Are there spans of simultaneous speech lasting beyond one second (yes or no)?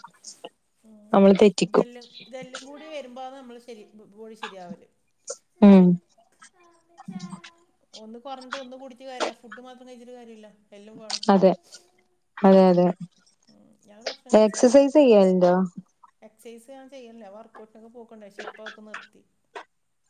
no